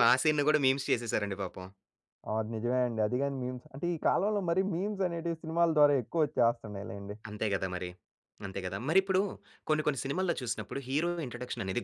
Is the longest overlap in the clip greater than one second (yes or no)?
no